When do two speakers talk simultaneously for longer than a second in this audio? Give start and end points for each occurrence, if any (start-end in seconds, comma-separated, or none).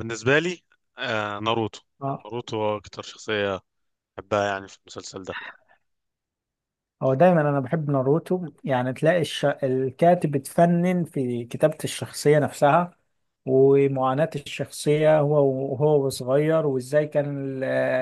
none